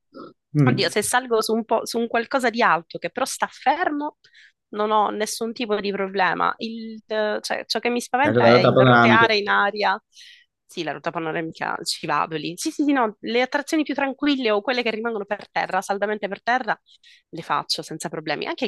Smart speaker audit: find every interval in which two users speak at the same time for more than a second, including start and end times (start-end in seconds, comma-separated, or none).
8.2-9.6